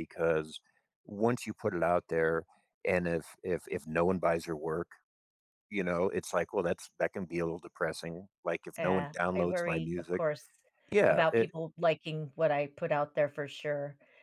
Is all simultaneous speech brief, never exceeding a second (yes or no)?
no